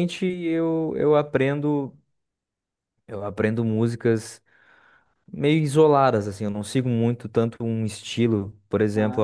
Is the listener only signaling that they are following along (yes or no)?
yes